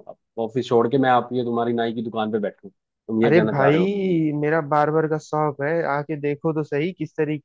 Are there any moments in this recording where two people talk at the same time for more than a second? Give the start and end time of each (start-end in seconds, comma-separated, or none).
none